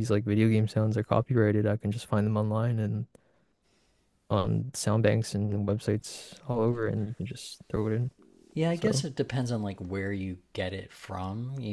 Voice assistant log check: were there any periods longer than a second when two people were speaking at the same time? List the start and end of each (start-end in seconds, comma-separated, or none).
none